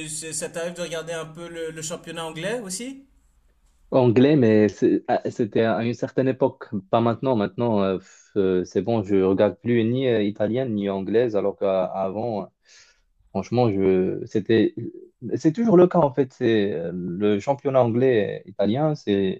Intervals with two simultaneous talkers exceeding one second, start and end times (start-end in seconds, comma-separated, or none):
none